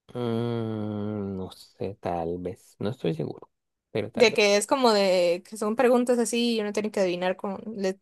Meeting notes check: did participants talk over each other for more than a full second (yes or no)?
no